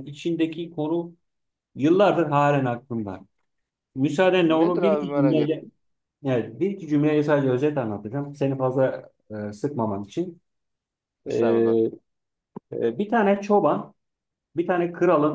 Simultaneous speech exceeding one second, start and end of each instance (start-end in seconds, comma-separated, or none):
4.4-5.7